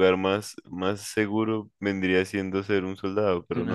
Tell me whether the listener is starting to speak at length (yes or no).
yes